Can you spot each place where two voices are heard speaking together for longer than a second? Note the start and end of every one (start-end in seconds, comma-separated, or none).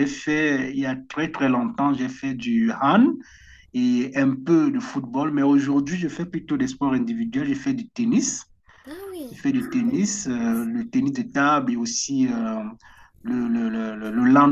9.3-10.7